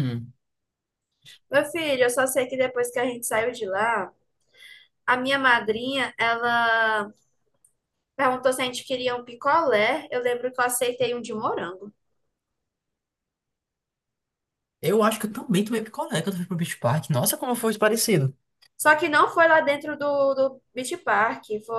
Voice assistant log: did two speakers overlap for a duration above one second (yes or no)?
no